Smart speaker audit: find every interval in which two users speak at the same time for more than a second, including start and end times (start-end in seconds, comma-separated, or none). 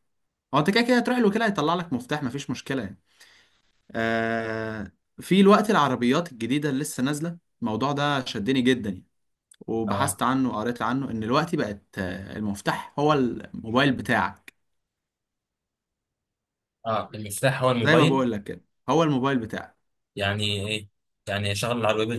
none